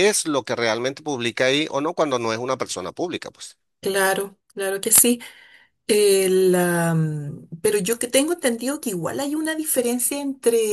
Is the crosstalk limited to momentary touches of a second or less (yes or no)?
yes